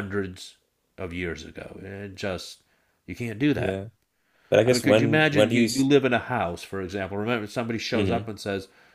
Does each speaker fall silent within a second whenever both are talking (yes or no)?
no